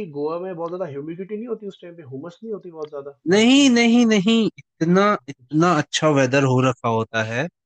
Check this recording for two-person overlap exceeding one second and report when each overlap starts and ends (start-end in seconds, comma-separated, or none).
none